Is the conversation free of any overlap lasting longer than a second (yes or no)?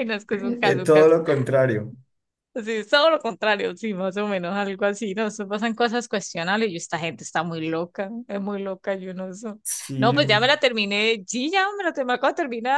yes